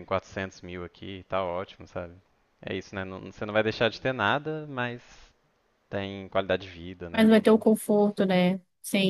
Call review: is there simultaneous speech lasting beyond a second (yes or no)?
no